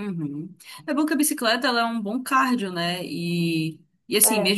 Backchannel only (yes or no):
yes